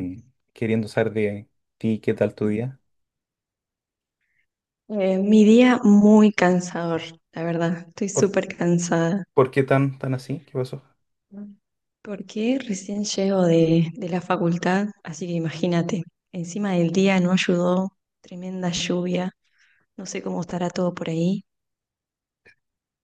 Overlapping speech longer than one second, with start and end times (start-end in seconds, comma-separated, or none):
none